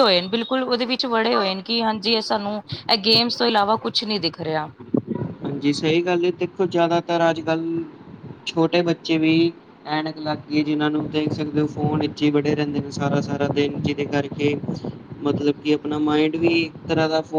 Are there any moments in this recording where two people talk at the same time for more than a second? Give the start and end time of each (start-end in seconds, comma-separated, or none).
none